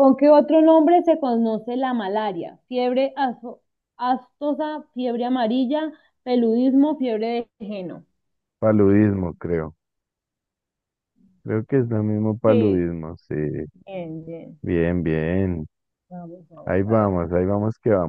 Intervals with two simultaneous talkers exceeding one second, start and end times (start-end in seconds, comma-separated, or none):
none